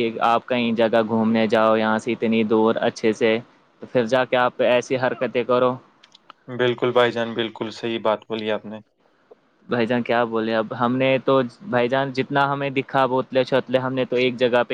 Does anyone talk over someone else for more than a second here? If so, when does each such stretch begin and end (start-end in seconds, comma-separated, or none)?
none